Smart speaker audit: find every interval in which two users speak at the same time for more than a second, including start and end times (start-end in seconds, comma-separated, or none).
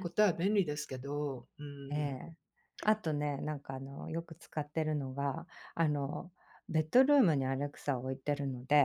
none